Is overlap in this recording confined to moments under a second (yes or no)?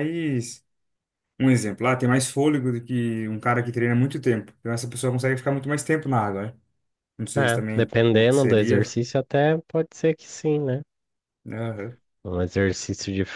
no